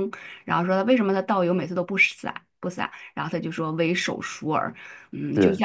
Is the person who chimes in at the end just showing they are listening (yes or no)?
yes